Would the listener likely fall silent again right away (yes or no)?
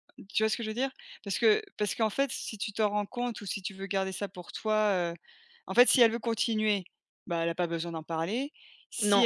yes